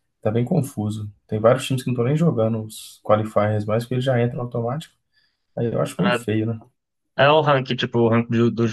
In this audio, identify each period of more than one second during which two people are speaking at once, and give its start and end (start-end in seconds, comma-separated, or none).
none